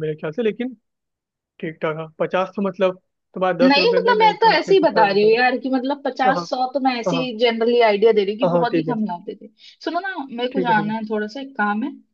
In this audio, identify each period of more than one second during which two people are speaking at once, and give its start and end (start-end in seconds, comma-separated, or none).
3.6-5.6